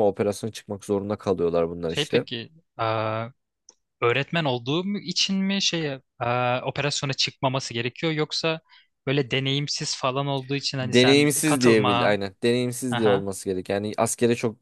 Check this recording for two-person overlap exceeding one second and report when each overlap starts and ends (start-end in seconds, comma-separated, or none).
10.8-12.2